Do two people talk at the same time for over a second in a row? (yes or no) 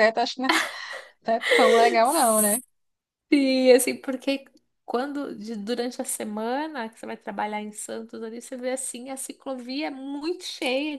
no